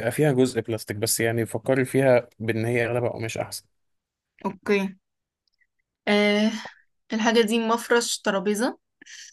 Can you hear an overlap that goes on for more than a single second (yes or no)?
no